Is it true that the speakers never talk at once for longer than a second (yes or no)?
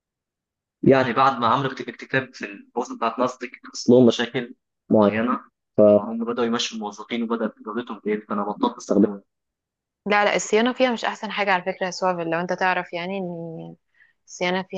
yes